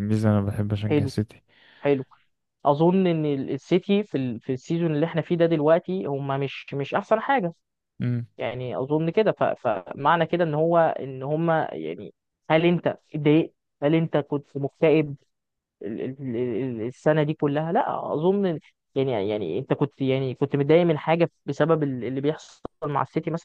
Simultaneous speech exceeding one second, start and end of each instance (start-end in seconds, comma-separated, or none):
none